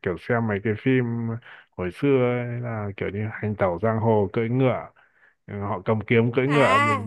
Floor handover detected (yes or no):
no